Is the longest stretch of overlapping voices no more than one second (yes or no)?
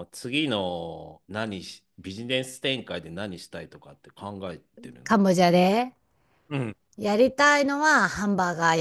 yes